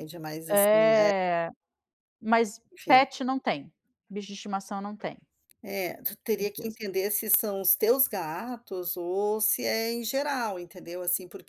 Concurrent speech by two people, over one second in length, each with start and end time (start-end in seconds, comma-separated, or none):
none